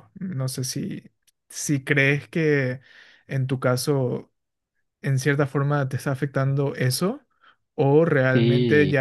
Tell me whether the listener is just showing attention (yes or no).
yes